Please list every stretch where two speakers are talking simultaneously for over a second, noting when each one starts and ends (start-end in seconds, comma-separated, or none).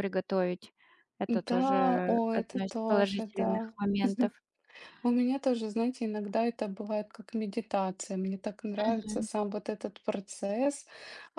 1.3-3.7